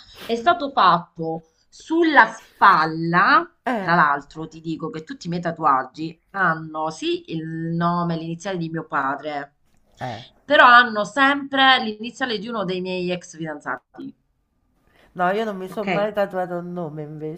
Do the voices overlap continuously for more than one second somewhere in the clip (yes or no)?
no